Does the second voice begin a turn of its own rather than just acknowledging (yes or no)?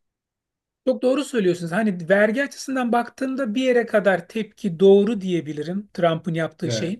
no